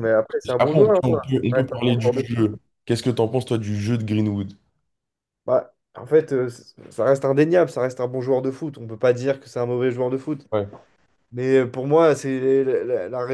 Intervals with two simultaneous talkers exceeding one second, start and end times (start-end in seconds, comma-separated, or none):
0.6-2.5